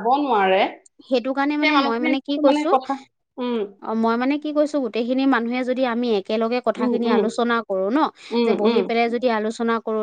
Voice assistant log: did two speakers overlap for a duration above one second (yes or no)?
no